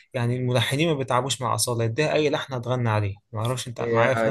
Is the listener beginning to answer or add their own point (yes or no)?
yes